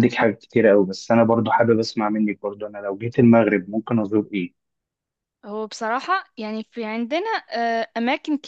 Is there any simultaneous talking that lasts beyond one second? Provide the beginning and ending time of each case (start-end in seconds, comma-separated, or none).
none